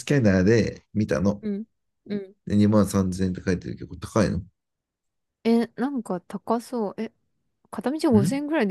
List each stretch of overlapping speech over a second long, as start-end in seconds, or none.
none